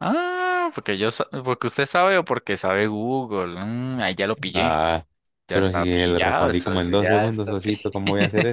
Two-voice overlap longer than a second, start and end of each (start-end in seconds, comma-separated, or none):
5.5-7.9